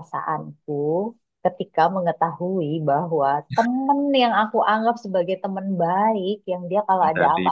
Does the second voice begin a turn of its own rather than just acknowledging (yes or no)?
no